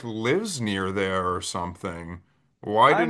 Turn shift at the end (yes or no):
yes